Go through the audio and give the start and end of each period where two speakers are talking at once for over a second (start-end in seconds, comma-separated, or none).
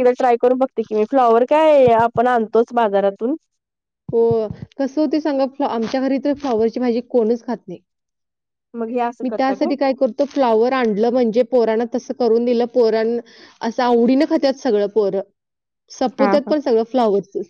none